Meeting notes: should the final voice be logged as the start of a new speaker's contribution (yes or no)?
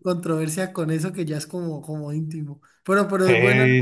yes